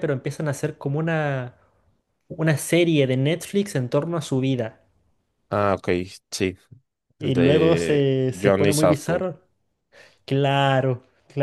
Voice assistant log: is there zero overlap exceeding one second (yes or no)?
no